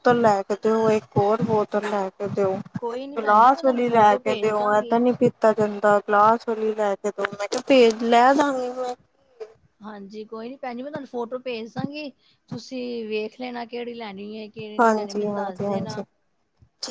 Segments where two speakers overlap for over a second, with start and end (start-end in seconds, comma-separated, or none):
3.2-5.0, 14.8-16.0